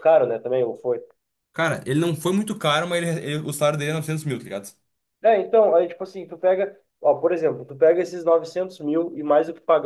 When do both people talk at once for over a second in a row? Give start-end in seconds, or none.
none